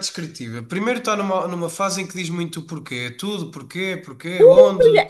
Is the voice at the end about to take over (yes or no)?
yes